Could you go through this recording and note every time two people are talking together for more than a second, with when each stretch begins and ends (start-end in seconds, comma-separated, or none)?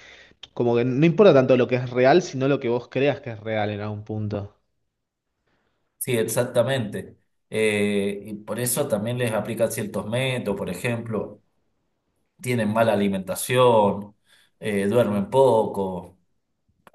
none